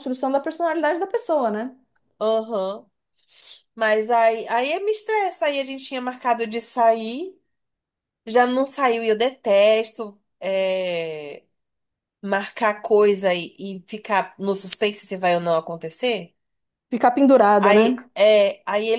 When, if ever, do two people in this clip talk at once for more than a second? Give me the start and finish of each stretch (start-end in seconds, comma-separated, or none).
none